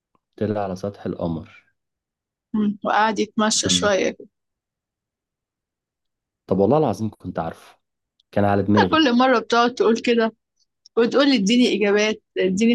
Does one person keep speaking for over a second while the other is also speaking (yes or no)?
no